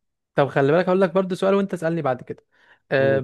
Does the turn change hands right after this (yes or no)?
no